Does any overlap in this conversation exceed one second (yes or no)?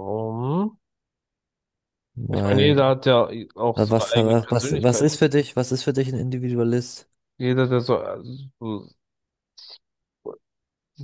yes